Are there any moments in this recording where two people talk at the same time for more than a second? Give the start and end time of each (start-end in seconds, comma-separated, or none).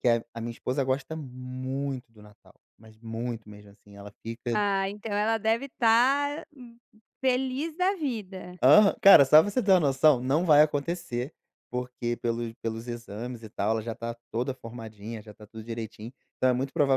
none